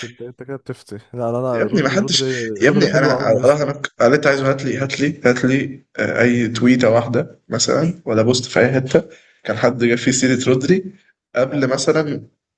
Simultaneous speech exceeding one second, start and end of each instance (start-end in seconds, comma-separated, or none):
1.5-3.7